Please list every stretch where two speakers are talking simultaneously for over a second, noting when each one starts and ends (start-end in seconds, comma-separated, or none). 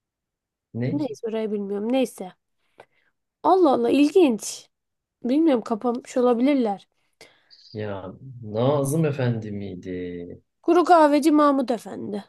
none